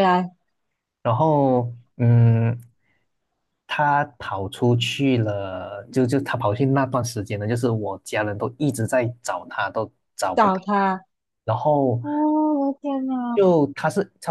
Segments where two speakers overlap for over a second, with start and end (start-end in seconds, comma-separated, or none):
none